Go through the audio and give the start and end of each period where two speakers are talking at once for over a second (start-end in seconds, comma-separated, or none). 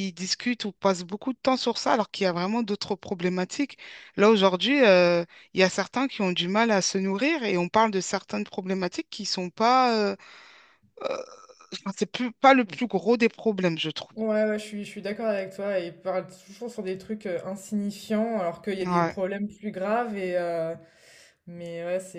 none